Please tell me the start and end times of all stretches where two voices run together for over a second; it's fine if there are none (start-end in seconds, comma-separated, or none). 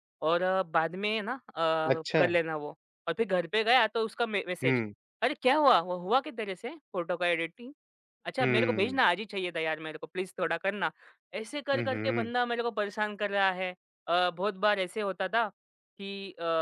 none